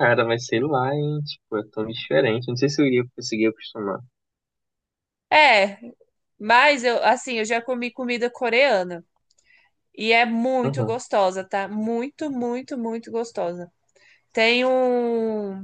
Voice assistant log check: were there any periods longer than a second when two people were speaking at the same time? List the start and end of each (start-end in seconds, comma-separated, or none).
none